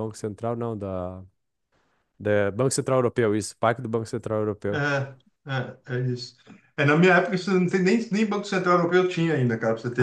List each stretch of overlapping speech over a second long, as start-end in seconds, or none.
none